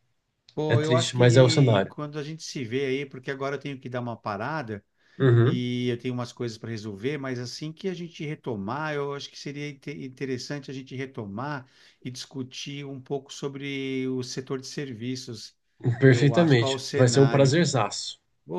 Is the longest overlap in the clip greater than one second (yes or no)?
yes